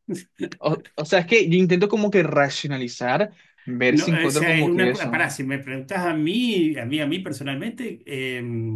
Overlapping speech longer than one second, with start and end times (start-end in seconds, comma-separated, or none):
3.9-5.3